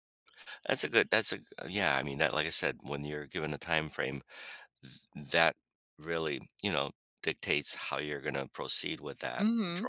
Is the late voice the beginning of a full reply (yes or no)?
yes